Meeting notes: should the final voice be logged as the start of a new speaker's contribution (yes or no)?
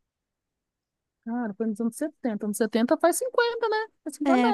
yes